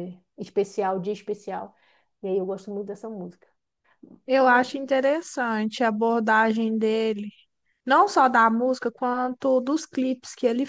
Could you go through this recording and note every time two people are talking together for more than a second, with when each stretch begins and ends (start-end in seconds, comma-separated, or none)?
none